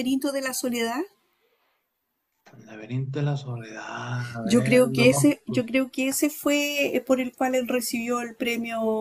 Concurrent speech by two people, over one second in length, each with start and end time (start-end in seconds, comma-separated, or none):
4.4-5.6